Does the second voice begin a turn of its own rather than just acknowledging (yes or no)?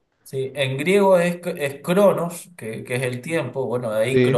no